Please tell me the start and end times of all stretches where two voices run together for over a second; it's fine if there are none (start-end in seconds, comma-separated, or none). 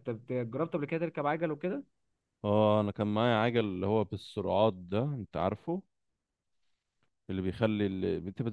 none